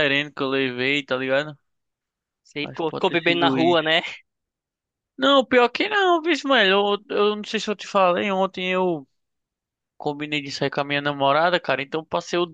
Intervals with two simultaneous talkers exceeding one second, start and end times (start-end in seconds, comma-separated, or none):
2.6-4.0